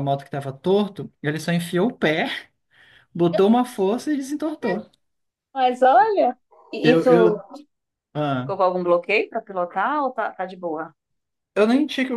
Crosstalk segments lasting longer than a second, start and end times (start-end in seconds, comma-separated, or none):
none